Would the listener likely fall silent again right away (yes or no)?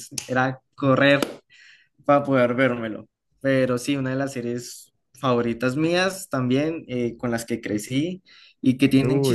yes